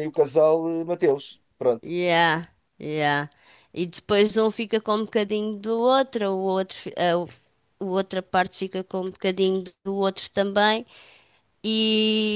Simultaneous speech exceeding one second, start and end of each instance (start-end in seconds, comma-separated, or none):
none